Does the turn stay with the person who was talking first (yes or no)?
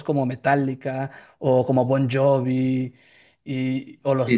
no